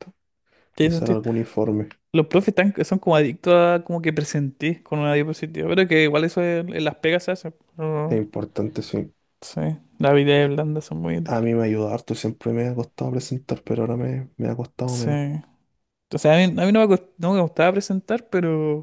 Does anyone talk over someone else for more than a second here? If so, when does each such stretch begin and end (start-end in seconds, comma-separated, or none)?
none